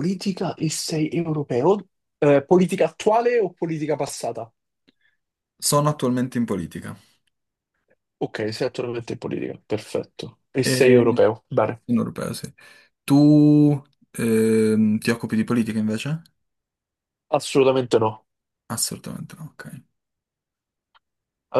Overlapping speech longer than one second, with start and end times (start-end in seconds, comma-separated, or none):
none